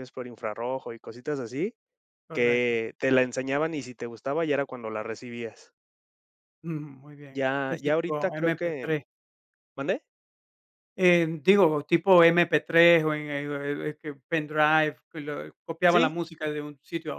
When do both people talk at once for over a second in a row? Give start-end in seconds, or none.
7.4-8.9